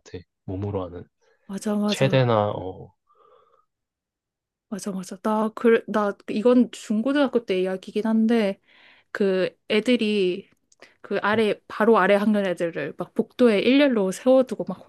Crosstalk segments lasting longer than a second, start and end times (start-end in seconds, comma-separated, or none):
none